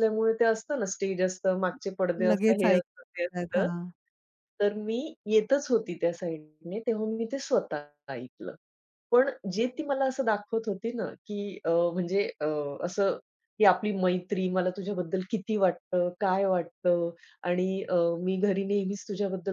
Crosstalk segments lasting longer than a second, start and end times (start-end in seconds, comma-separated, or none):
2.3-3.7